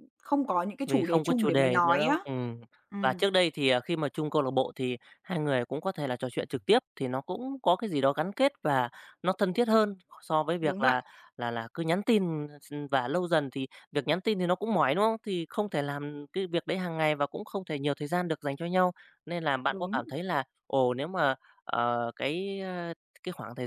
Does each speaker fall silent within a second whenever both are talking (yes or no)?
no